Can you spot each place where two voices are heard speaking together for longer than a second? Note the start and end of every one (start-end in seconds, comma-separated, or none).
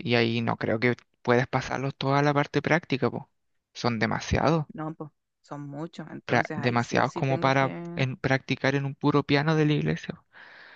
6.2-8.1